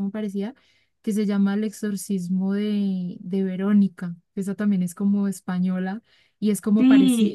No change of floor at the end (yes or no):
no